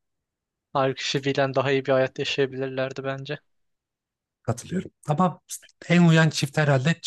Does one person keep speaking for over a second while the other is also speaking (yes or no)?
no